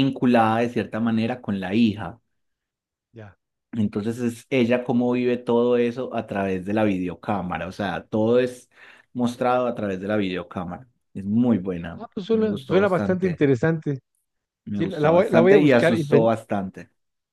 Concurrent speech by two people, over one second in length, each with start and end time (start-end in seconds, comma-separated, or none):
11.9-13.4, 14.7-16.3